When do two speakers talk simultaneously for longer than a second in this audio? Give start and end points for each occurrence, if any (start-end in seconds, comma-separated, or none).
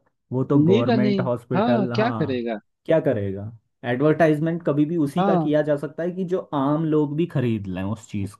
0.6-2.5